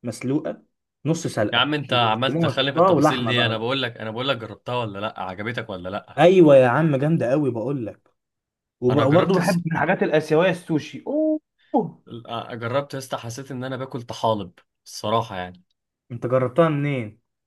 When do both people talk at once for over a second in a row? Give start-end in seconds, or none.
1.5-3.6